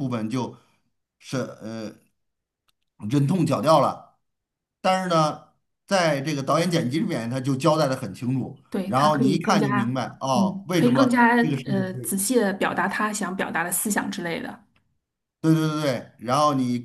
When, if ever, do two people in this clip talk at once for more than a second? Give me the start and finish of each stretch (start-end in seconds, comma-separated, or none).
8.7-12.2